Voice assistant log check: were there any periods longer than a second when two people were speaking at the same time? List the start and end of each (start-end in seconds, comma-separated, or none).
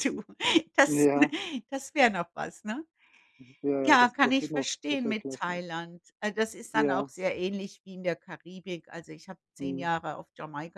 3.9-5.6